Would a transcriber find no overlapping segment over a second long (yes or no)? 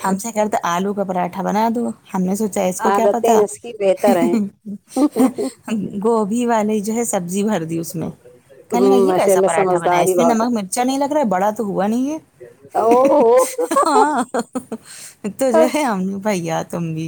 no